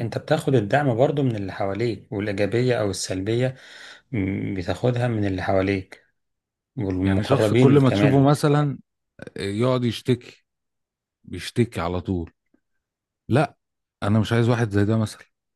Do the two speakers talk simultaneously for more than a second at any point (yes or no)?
yes